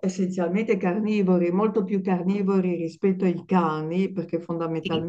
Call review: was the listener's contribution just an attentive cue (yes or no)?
yes